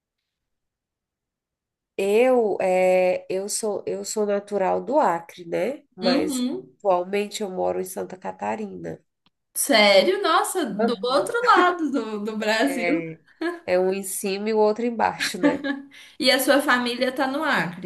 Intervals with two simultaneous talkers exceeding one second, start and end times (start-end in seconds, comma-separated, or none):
none